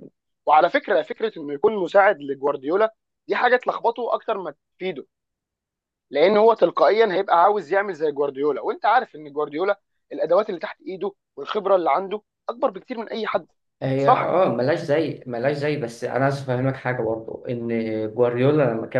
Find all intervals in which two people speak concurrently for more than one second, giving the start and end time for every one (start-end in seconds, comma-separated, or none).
none